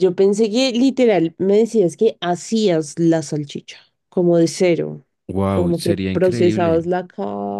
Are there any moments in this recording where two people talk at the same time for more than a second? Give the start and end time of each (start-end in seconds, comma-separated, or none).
5.5-6.8